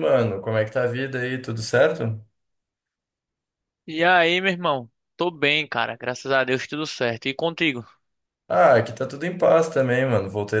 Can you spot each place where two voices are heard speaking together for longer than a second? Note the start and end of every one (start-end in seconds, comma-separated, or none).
none